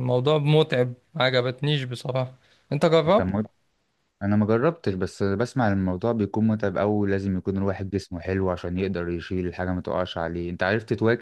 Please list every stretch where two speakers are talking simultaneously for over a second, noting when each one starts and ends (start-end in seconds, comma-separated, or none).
none